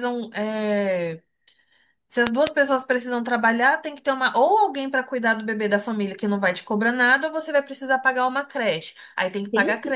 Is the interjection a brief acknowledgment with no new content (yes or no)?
no